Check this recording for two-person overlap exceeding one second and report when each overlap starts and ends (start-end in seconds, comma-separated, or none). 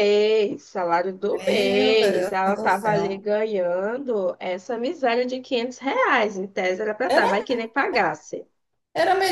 1.2-3.2